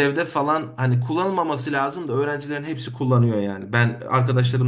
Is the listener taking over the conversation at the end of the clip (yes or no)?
no